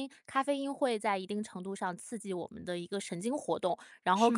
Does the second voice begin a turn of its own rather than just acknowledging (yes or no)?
no